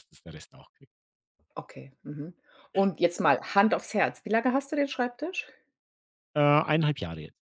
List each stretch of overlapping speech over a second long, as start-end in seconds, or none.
none